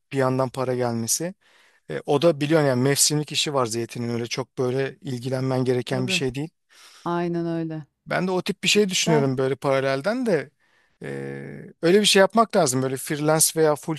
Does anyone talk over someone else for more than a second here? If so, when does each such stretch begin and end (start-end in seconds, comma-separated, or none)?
none